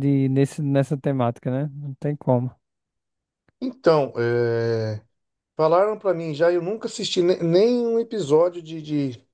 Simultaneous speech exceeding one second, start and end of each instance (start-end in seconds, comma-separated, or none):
none